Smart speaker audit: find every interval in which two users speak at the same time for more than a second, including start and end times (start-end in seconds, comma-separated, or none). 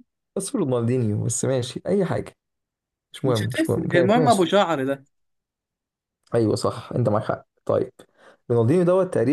3.2-4.5